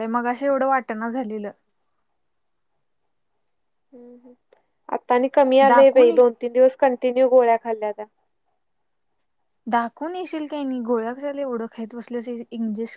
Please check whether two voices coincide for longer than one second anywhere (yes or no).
no